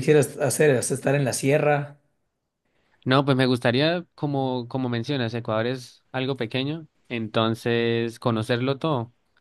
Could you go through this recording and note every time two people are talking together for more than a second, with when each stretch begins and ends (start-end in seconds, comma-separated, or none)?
none